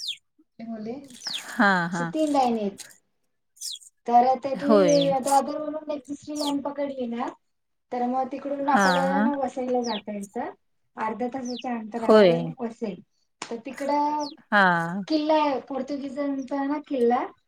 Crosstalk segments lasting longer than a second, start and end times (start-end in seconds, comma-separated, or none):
none